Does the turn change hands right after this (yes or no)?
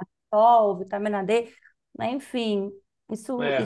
no